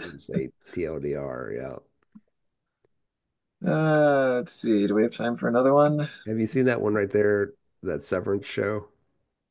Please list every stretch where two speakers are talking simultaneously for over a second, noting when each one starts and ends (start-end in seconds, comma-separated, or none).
none